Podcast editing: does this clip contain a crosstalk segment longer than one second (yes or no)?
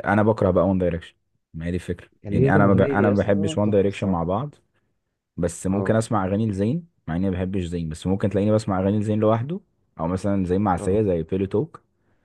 yes